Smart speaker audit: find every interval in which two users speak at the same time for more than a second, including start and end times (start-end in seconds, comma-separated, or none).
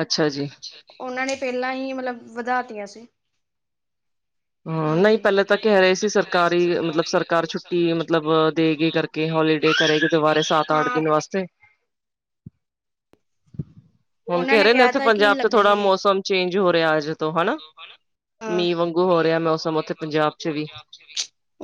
14.3-15.9